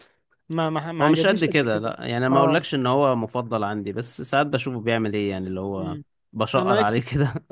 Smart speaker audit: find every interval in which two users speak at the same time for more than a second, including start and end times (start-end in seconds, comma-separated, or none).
1.0-2.6